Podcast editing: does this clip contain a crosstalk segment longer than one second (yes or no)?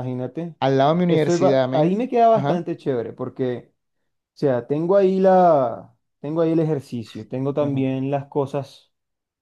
yes